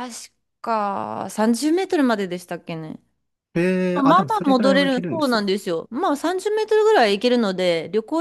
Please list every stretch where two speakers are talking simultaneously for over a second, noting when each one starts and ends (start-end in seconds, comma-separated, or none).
3.9-5.4